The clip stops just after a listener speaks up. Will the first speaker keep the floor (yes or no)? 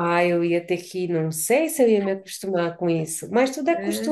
no